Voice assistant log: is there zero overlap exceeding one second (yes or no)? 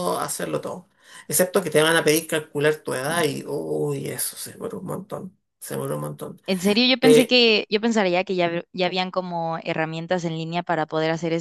yes